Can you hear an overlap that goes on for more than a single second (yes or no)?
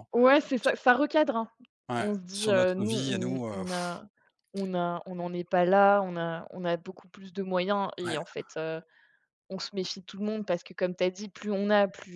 yes